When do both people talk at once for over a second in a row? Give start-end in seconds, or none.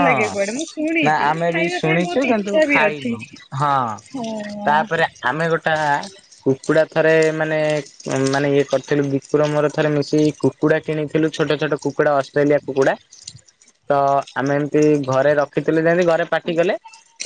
1.1-3.1